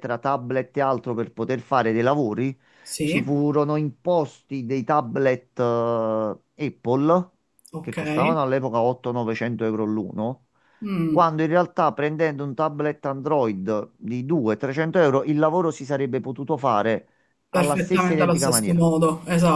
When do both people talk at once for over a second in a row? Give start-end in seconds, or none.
17.5-18.9